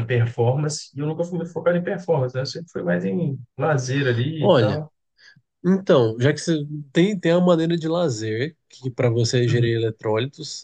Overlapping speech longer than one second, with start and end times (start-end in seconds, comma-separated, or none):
none